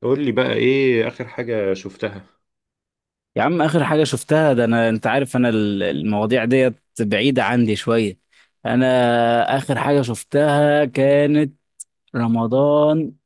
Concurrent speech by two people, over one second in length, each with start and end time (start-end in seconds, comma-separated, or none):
none